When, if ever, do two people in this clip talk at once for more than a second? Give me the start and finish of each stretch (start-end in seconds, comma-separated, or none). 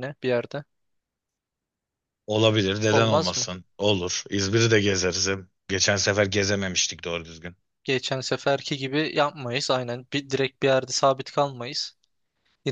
none